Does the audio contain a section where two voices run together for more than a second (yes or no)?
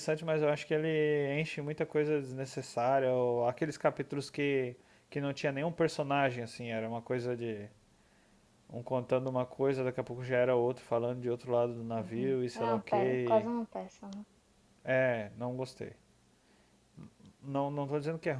yes